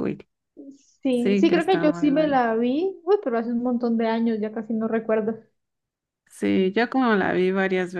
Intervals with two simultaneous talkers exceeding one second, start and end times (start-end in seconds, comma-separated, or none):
1.1-2.4